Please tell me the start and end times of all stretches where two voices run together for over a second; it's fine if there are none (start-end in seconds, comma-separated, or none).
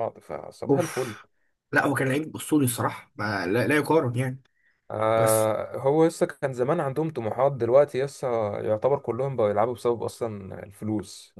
none